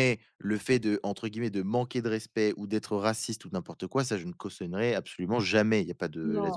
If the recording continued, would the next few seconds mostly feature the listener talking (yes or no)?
yes